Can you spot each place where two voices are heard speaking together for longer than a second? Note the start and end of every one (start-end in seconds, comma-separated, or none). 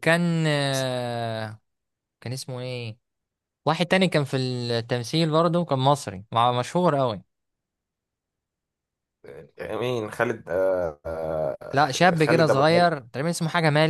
11.7-12.9